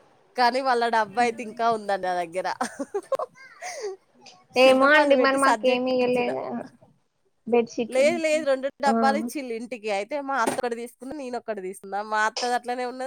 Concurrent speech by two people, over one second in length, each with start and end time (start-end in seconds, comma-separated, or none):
4.7-6.3